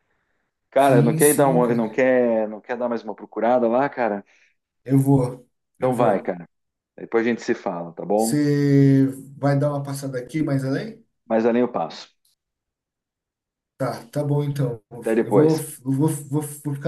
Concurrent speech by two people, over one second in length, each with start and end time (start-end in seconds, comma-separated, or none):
0.8-2.0